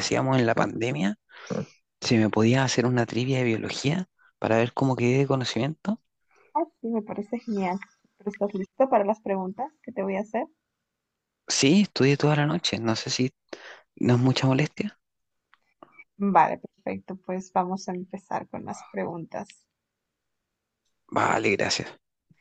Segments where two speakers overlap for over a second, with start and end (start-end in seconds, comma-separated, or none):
none